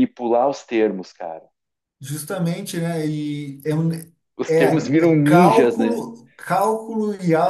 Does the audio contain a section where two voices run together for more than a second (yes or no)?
yes